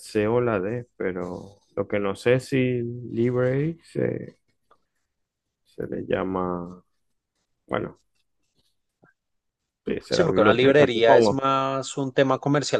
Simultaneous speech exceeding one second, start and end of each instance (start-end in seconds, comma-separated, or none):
10.1-11.4